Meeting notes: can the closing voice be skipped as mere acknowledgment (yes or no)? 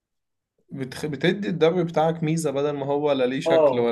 no